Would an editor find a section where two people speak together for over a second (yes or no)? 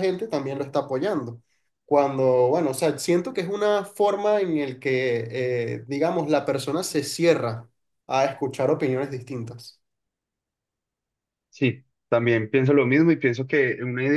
no